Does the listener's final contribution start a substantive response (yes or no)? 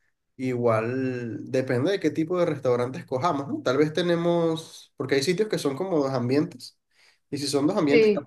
no